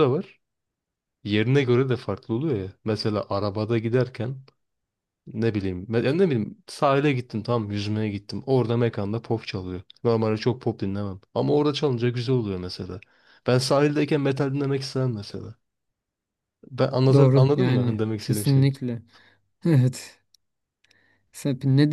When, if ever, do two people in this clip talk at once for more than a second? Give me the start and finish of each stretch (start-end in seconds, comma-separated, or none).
17.1-18.7